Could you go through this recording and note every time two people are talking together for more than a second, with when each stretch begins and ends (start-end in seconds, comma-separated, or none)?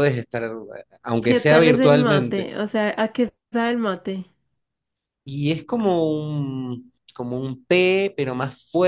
1.2-2.5